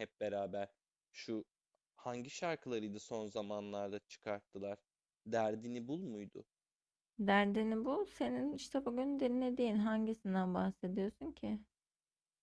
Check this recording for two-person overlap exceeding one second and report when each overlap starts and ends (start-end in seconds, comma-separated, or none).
none